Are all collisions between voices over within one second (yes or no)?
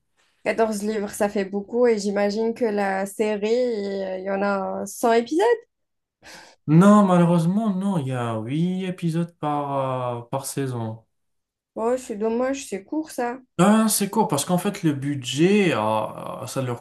yes